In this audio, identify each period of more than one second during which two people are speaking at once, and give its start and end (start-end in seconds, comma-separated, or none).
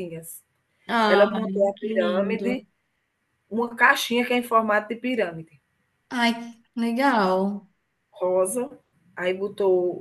1.1-2.6